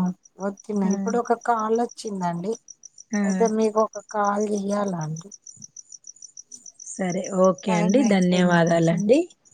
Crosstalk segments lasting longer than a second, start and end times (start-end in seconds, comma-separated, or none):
7.7-9.0